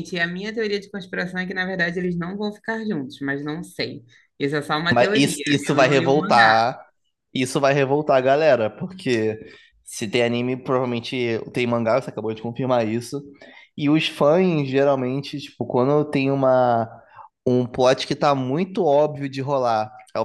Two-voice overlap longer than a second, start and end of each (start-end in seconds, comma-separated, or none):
4.9-6.5